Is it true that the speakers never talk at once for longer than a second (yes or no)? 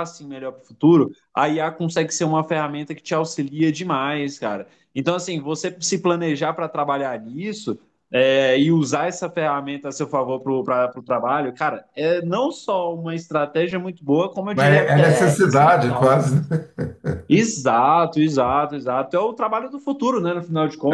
no